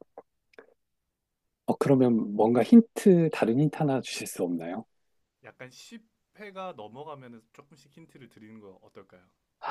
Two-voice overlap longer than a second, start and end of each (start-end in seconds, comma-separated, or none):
none